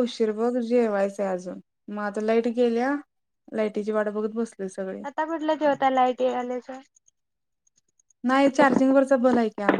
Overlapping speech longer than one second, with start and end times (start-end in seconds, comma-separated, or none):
none